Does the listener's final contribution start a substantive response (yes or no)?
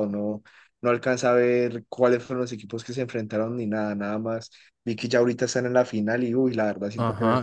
yes